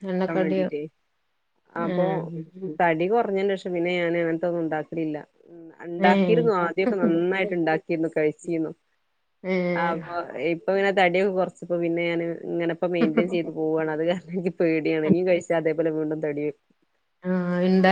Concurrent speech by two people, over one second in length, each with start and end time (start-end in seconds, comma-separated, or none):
6.1-7.4